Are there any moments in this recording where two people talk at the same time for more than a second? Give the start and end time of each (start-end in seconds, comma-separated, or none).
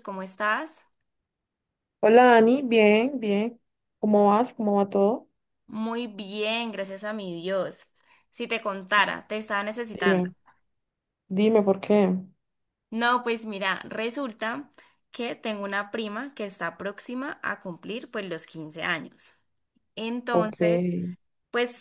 none